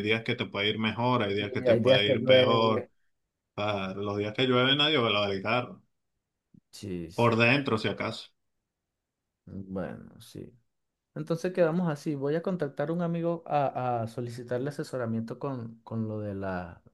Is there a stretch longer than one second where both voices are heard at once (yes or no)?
yes